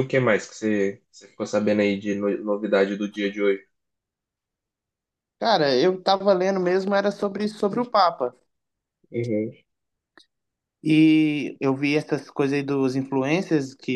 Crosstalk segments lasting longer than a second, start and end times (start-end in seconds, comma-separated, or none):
none